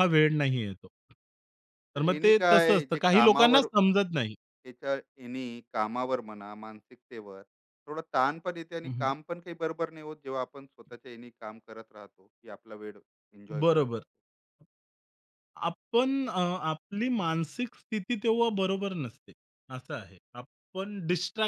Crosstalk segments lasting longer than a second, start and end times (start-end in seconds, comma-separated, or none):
1.9-3.6